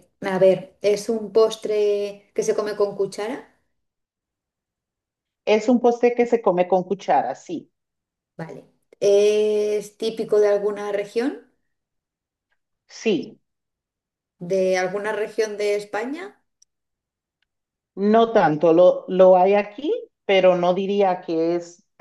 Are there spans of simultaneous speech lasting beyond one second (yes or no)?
no